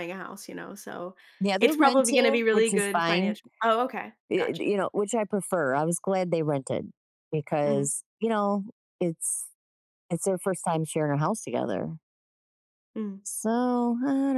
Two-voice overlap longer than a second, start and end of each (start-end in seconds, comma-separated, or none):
1.6-3.4